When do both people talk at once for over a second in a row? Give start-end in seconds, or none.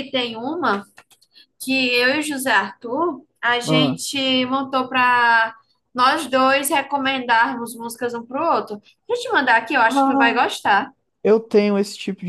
none